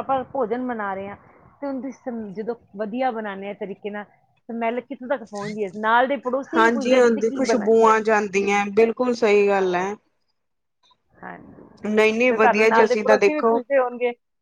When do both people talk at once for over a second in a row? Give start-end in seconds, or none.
6.6-7.9, 12.3-13.6